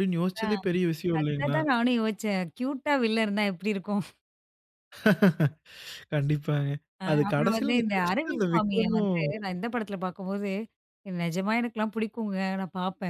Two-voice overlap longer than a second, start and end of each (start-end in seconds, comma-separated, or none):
7.1-9.3